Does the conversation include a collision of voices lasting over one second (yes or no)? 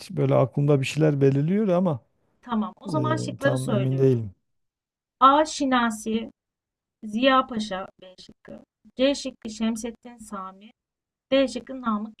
yes